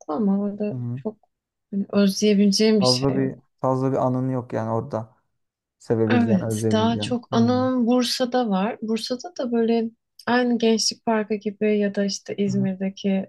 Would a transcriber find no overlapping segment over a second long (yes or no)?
no